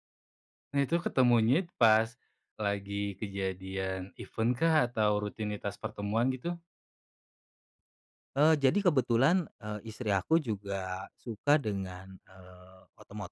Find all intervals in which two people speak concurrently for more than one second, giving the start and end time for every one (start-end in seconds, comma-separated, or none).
none